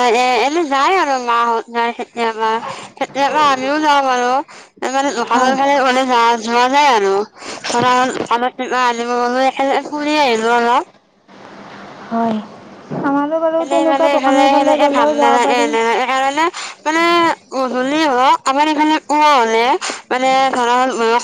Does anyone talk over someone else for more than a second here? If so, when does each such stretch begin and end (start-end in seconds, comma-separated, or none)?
13.6-15.6